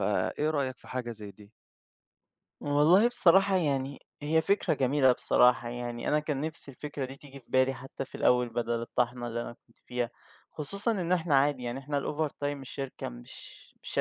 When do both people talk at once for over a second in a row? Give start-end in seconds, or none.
none